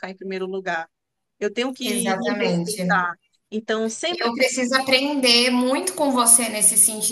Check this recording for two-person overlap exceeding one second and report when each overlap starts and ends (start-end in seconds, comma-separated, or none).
1.8-3.1